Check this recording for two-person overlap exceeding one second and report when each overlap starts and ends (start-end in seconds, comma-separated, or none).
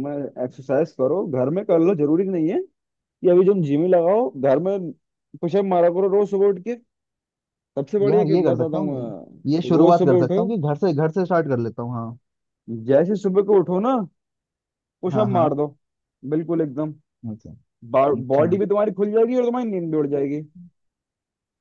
8.1-10.4